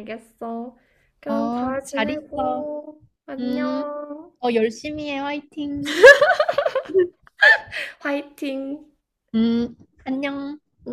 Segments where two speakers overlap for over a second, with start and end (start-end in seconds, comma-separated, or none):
1.3-2.7